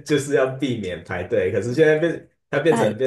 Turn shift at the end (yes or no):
no